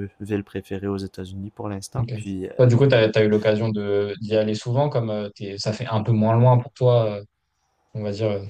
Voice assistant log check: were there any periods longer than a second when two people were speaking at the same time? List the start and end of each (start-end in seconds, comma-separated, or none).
none